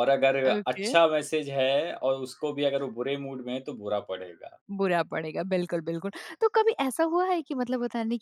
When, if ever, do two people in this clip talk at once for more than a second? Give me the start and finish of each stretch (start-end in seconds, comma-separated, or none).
none